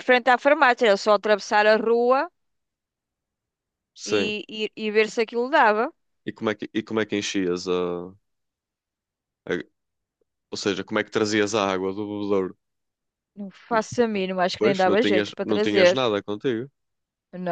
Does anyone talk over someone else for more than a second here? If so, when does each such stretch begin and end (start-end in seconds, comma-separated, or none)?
14.6-16.1